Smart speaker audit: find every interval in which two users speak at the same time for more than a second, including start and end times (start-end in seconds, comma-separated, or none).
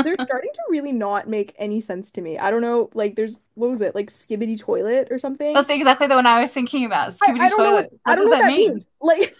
7.2-8.9